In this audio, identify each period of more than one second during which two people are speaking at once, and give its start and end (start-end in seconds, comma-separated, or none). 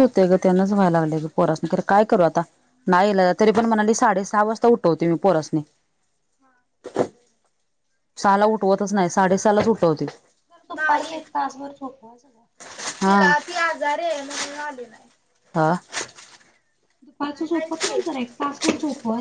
none